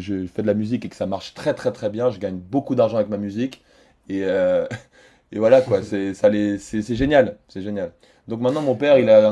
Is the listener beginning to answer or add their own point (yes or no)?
no